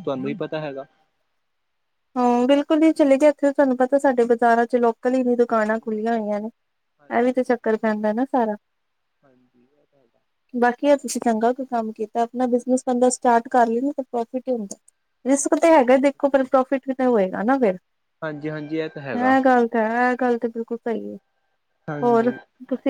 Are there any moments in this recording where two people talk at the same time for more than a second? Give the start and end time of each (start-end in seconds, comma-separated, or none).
none